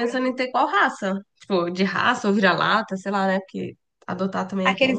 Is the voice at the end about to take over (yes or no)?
yes